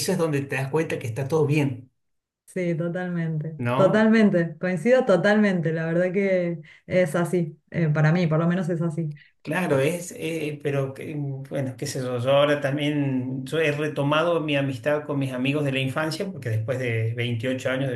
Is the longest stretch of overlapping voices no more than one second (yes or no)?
yes